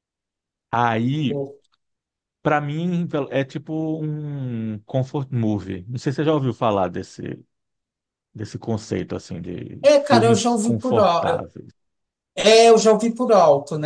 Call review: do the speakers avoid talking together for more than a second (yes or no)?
no